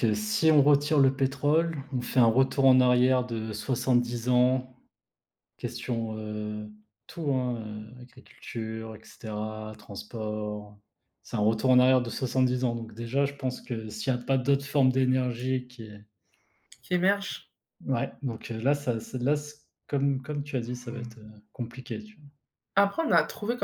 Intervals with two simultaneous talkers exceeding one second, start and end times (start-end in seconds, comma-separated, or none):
none